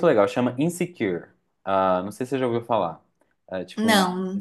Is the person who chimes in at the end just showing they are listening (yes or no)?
yes